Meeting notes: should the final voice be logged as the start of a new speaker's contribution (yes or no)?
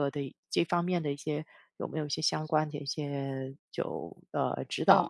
yes